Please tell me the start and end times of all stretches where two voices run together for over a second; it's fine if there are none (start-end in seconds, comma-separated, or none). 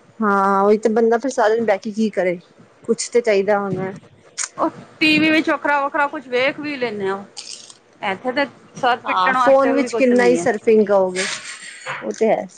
9.1-10.4